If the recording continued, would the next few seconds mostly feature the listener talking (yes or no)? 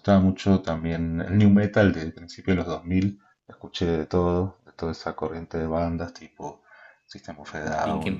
no